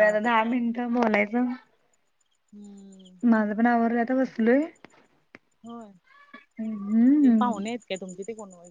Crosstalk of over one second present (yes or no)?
no